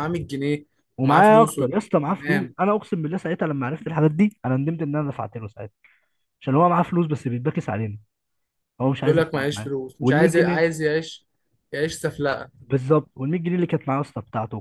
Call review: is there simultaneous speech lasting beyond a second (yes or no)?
yes